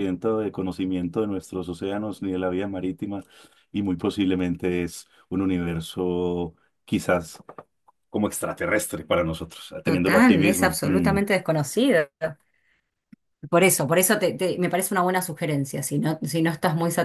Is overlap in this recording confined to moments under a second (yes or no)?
no